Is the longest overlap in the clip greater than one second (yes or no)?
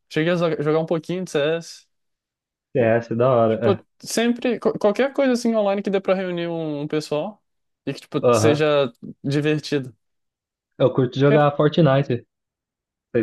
no